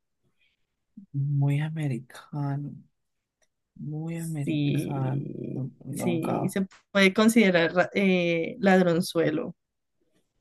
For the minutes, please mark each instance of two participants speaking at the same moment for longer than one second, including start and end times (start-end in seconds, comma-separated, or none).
4.1-6.6